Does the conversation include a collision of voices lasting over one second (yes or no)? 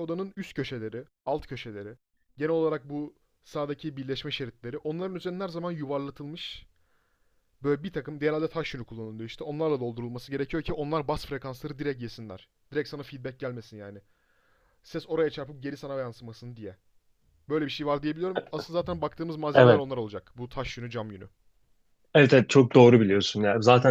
no